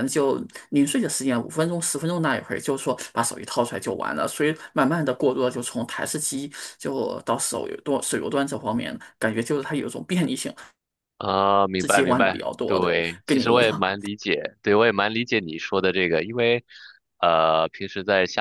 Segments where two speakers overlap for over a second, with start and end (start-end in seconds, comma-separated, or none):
11.8-13.8